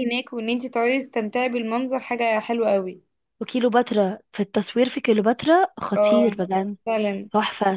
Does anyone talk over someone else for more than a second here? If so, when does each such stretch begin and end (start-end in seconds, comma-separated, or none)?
none